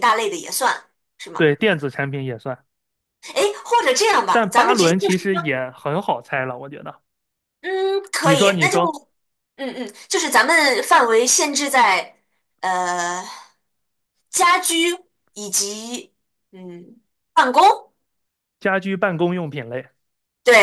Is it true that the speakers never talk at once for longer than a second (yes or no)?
no